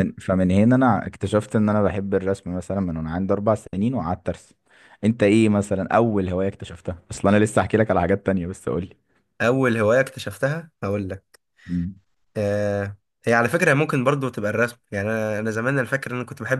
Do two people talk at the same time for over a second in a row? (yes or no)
no